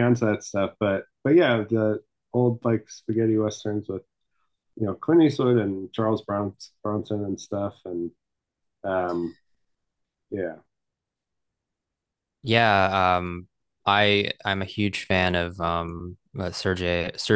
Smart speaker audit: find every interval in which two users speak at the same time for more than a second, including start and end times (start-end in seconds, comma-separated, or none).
none